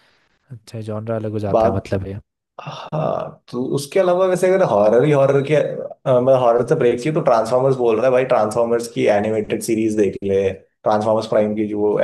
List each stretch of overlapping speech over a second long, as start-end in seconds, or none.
none